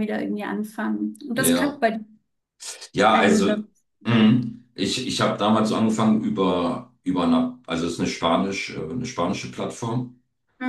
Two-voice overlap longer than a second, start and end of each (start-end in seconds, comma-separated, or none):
none